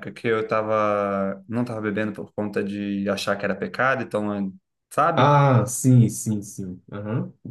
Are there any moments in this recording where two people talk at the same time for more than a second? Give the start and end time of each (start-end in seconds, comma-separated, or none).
none